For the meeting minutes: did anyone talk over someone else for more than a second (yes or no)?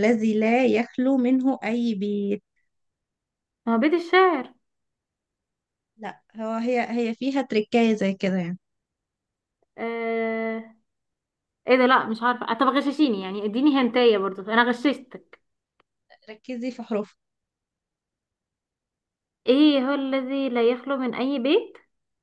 no